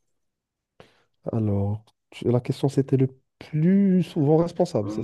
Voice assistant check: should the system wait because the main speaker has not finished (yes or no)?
no